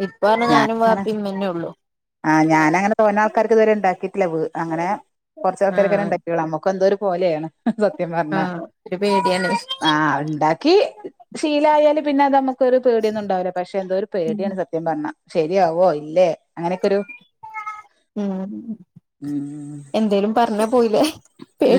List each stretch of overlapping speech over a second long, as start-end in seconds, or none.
none